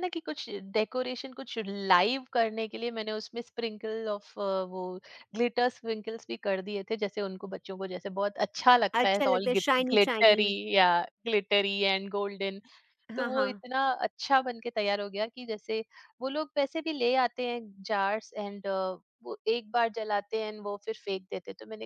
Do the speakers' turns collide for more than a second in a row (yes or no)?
yes